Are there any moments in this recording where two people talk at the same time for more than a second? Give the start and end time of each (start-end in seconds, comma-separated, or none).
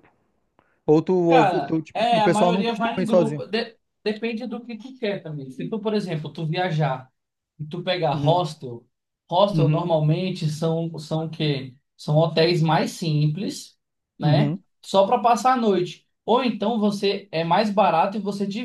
1.3-3.4